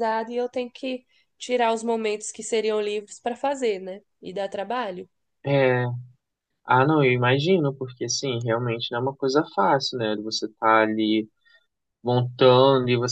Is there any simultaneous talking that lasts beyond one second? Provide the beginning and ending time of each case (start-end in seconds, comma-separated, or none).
none